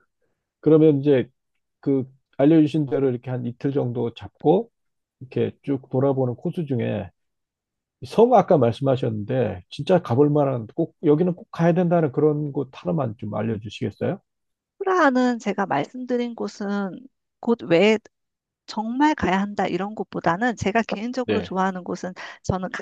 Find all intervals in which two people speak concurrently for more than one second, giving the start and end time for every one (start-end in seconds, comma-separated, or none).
none